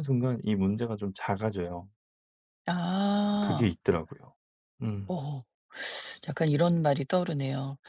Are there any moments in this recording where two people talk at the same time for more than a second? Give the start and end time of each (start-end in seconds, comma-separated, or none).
none